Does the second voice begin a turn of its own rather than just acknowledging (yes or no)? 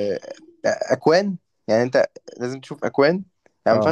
no